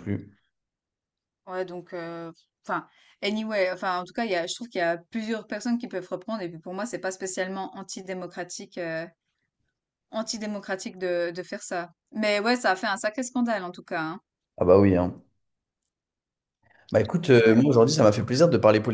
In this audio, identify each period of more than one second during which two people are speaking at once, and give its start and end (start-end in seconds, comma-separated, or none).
none